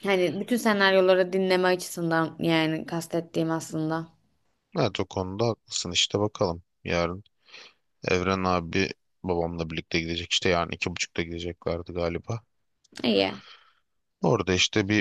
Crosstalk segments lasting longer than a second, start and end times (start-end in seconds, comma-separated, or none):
none